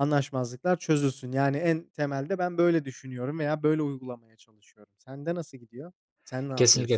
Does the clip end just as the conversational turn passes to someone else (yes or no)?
yes